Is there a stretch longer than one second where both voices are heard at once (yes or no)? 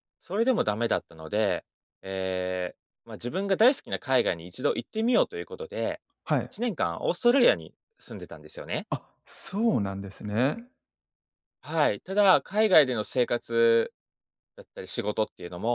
no